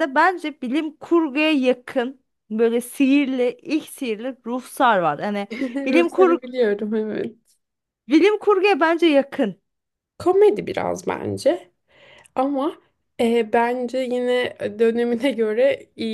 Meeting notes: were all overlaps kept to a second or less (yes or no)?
yes